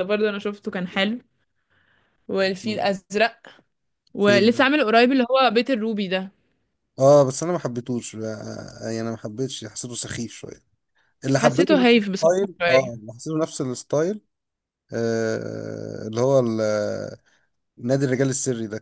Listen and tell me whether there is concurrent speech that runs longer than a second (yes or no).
yes